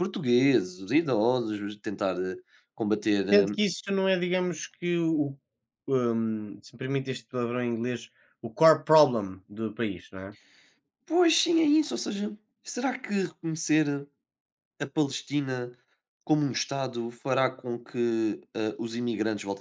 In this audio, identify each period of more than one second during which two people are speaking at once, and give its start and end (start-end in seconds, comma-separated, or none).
none